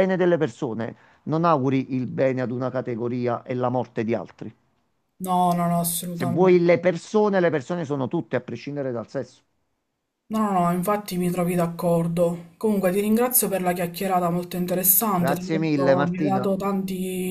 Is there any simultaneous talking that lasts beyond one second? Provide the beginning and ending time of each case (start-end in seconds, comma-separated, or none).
15.2-16.5